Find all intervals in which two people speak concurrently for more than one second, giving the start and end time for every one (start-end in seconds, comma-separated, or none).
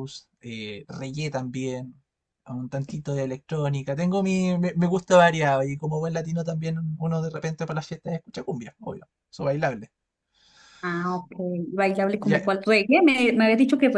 none